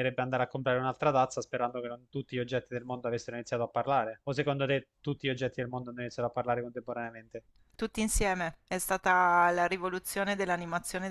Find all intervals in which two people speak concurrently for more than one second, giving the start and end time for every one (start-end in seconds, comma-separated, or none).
none